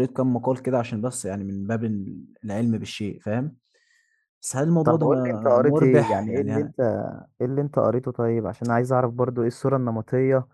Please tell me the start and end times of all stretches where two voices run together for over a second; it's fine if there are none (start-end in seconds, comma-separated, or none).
4.8-6.7